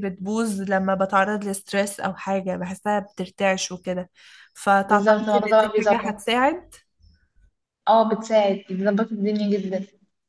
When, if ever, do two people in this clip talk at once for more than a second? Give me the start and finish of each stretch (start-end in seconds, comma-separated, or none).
4.8-6.4